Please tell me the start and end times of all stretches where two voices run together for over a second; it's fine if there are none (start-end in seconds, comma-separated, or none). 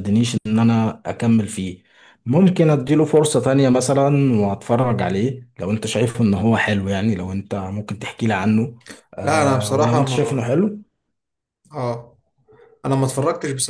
9.2-10.5